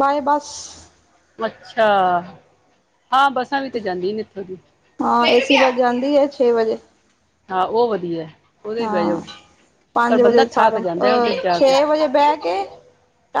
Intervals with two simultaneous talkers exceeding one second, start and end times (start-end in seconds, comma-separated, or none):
10.1-11.7